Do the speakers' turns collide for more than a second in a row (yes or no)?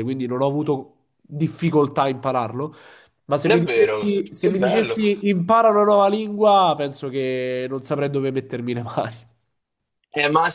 yes